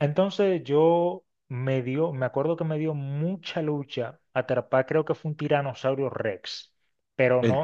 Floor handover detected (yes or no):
no